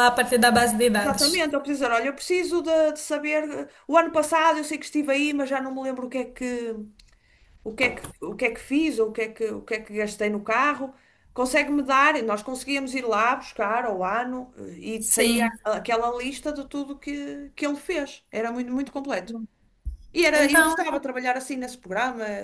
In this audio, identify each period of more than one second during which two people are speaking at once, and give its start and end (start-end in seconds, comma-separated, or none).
none